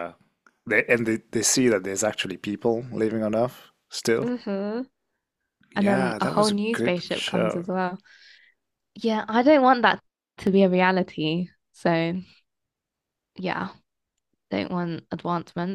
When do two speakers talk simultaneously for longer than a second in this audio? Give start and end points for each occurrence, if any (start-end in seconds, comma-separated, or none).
5.8-7.7